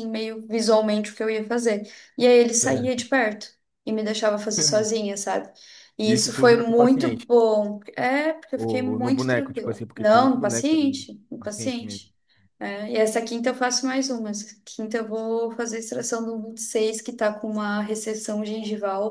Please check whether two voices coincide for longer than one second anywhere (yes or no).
yes